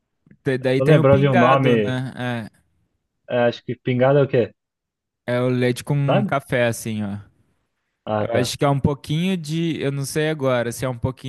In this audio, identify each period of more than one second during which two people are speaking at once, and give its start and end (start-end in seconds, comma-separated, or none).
0.8-2.0